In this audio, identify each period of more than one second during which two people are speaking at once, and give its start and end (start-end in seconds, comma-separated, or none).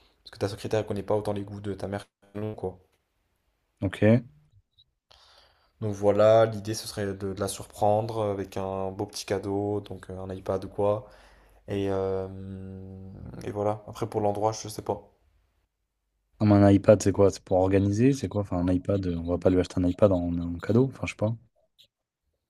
none